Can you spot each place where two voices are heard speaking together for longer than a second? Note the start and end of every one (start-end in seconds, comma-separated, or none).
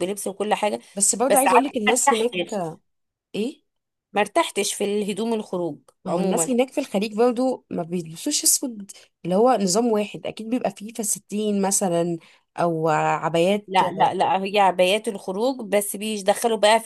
1.3-2.6